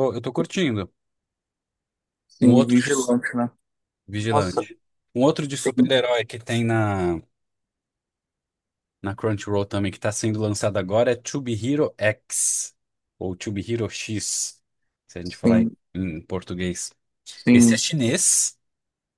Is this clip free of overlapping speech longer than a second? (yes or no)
yes